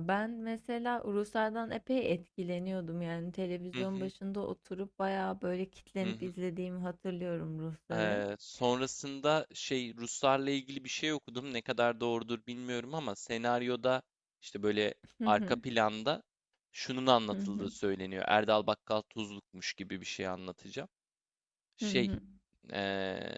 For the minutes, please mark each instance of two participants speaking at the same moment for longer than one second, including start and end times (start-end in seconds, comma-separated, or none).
none